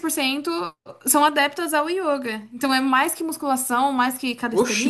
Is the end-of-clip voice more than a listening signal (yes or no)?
yes